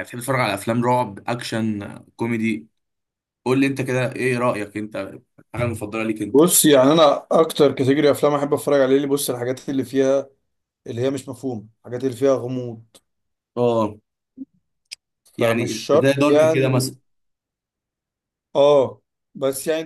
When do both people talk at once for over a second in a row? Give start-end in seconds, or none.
15.4-16.9